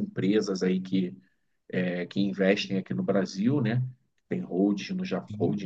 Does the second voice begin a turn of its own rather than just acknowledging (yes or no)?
no